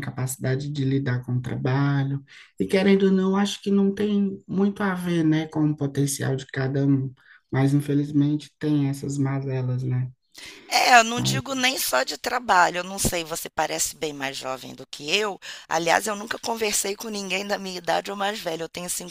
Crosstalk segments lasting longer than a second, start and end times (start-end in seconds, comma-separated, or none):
none